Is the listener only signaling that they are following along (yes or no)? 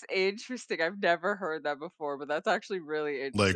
no